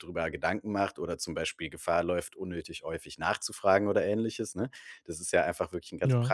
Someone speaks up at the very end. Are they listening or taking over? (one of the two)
listening